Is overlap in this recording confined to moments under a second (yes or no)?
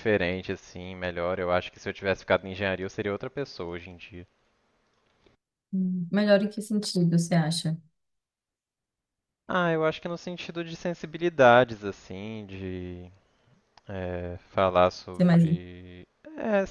yes